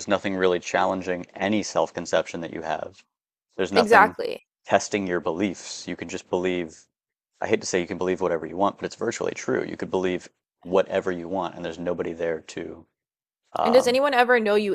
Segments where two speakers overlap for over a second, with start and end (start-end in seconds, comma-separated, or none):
none